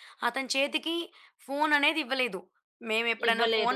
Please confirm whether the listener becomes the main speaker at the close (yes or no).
no